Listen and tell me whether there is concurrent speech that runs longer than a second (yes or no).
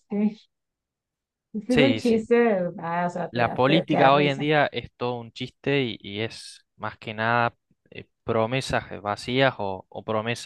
yes